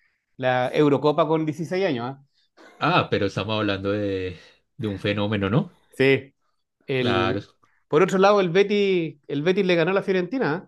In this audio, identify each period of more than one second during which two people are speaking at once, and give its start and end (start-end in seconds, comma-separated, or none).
none